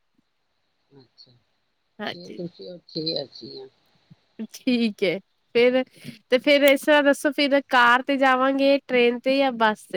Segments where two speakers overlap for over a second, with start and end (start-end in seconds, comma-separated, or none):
none